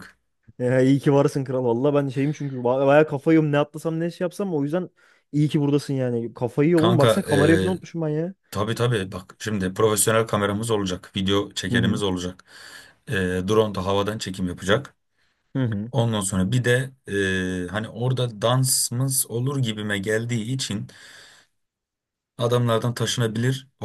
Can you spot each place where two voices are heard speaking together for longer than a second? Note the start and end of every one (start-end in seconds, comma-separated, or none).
6.8-8.0